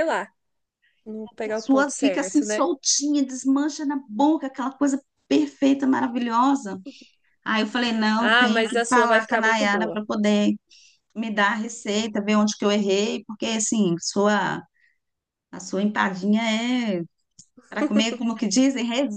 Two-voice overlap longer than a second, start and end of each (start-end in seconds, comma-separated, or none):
1.4-2.7, 8.2-10.0